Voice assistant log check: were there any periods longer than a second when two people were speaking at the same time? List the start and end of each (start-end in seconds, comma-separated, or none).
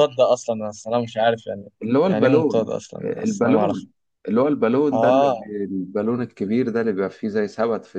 1.8-3.9